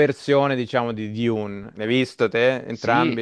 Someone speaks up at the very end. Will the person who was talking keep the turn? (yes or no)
no